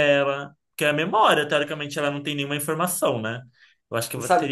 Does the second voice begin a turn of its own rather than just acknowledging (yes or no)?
yes